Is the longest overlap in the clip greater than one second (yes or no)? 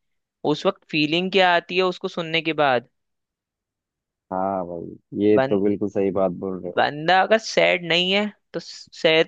no